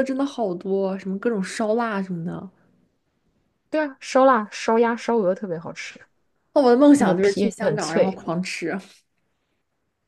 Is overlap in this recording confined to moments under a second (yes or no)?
no